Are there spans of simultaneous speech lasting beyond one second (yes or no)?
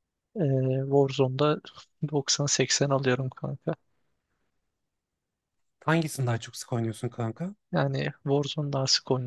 no